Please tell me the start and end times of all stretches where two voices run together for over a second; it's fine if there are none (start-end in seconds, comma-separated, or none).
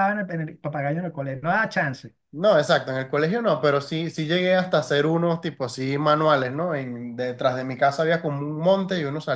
none